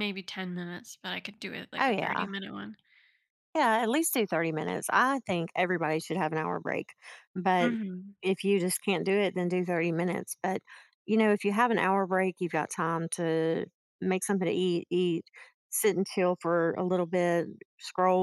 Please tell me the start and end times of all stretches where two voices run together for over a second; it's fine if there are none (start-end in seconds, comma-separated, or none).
none